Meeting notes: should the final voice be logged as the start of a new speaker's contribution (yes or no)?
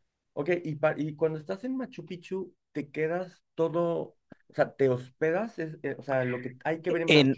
no